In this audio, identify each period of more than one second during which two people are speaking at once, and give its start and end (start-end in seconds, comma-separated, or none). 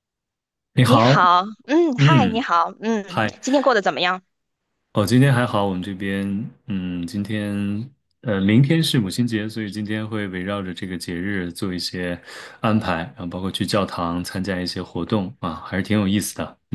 none